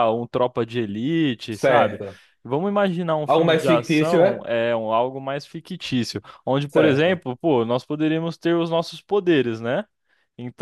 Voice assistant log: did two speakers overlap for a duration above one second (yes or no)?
yes